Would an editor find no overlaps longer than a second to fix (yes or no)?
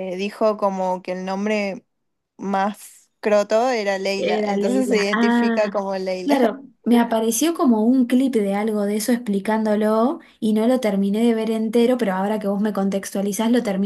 no